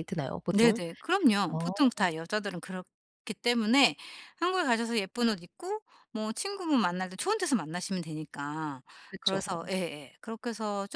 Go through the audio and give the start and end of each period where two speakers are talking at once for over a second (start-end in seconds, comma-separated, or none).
none